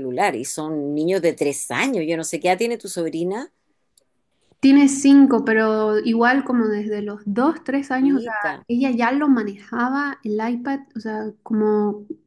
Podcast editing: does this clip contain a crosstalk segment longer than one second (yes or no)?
no